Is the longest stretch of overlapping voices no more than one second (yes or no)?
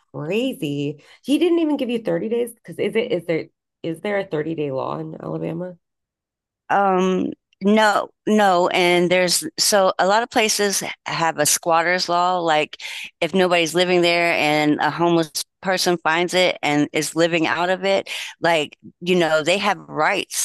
yes